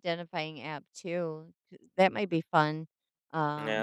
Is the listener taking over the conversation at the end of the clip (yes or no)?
yes